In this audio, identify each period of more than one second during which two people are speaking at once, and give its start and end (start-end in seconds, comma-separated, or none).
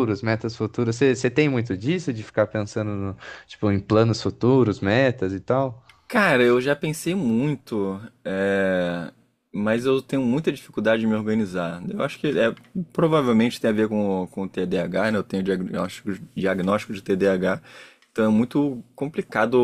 none